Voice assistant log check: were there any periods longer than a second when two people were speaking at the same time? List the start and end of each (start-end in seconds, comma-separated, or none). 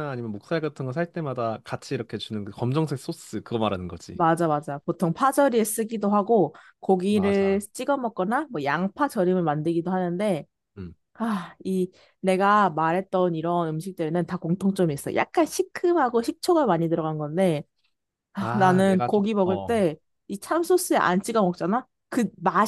18.4-19.9